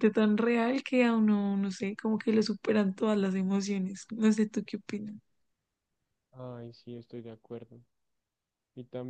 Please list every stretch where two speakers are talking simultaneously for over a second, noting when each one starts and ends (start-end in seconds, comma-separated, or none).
none